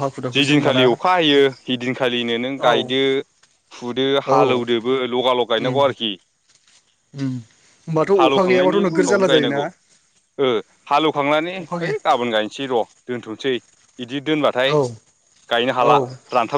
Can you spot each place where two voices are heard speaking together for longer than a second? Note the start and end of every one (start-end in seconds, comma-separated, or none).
8.2-9.6